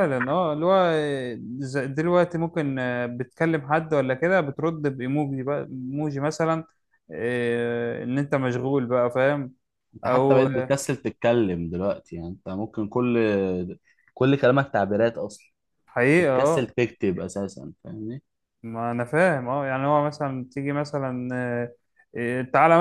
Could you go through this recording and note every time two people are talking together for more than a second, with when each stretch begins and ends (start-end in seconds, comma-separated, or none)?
none